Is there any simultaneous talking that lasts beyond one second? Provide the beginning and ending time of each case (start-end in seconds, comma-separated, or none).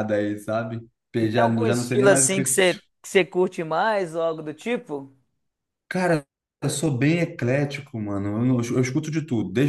1.2-2.6